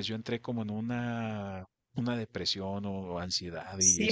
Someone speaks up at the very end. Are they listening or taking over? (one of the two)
taking over